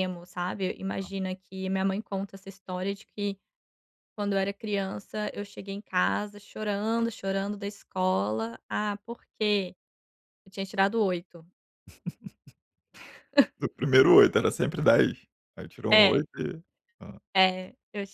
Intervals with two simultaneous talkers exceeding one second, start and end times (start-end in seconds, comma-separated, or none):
none